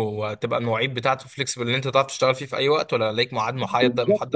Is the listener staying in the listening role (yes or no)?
no